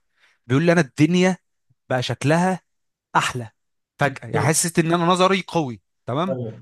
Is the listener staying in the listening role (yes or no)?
yes